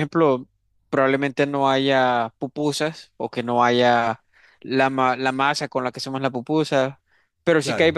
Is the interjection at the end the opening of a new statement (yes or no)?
no